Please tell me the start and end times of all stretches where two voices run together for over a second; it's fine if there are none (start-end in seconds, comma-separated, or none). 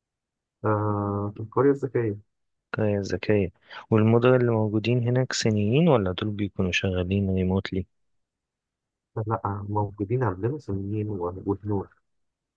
none